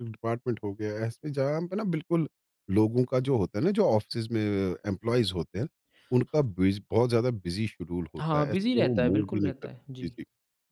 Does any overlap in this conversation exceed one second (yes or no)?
yes